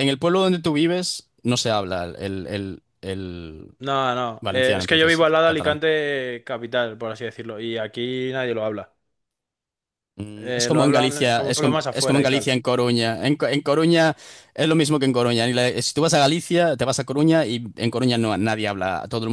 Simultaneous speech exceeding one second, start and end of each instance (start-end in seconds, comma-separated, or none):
4.4-5.8, 10.4-12.5